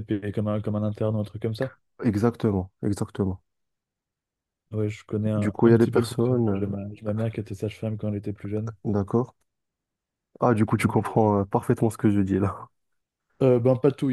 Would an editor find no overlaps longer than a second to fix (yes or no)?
no